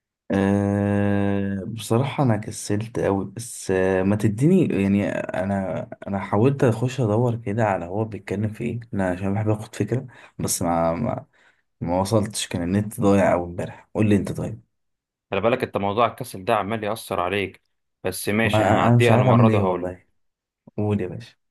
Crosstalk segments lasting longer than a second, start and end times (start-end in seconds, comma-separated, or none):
18.4-19.9